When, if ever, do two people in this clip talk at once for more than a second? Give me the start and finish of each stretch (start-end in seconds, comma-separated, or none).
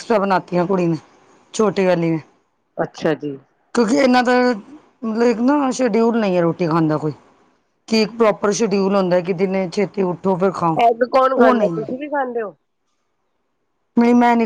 none